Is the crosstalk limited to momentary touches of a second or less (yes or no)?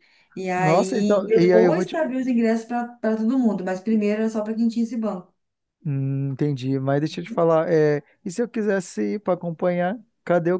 no